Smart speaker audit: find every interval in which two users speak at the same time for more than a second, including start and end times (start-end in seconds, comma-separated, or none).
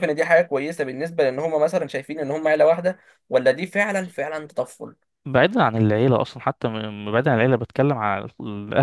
none